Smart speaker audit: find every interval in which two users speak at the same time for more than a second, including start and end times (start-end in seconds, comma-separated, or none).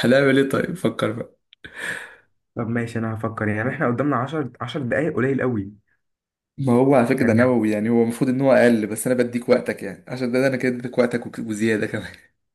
none